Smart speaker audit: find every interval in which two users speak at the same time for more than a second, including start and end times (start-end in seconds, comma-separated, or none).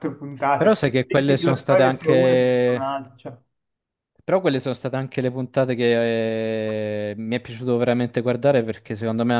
0.6-3.0